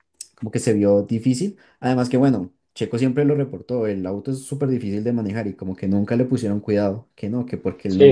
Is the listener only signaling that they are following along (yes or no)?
no